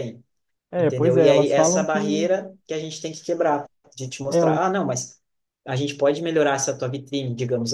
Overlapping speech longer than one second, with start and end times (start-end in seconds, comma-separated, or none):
0.8-2.3